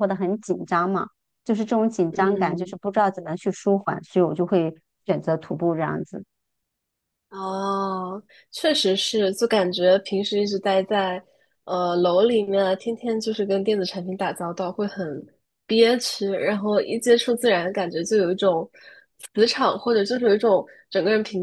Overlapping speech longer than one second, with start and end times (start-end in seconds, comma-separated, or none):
none